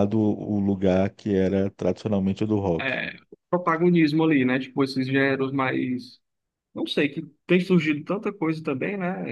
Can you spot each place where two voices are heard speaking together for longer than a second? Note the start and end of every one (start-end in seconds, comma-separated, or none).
none